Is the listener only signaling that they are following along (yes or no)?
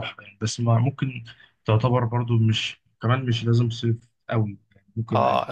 no